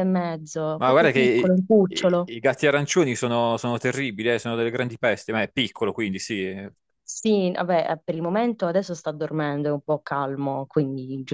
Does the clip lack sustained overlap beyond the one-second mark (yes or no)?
no